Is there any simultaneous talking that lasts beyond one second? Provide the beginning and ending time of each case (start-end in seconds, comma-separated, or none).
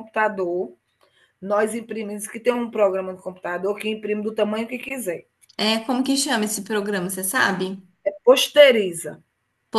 none